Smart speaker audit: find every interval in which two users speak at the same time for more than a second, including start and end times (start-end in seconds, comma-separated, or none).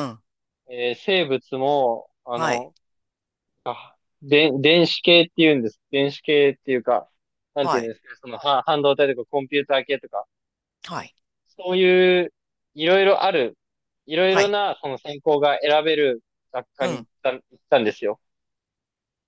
none